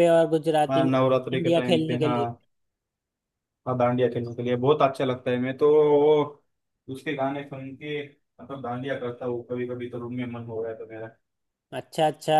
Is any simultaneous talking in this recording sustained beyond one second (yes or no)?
yes